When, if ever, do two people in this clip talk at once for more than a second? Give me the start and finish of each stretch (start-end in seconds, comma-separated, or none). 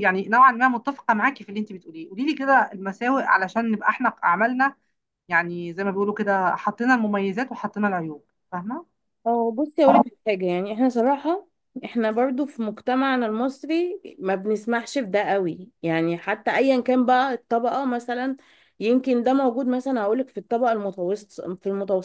none